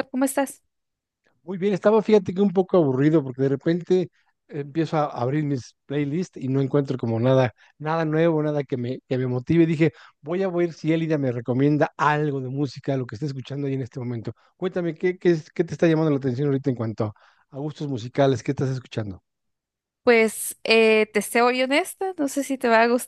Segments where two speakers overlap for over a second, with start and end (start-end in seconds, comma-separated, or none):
none